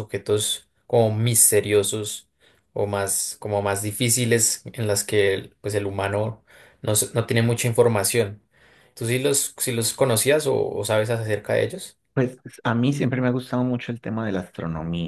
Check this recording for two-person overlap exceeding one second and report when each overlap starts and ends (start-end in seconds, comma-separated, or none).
none